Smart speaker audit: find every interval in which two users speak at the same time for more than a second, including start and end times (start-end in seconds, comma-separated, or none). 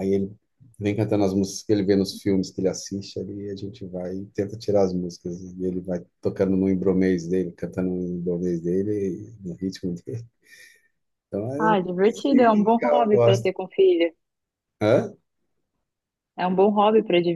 11.6-13.5